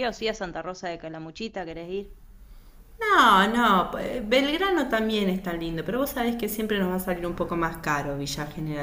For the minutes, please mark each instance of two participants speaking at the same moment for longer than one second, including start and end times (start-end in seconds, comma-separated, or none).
none